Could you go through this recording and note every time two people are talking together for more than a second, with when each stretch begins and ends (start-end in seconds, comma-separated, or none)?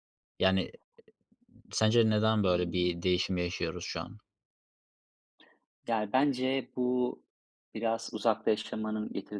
none